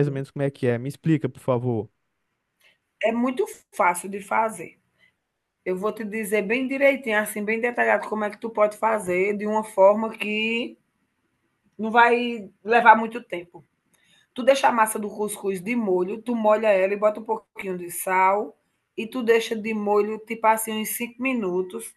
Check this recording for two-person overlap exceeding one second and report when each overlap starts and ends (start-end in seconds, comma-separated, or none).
none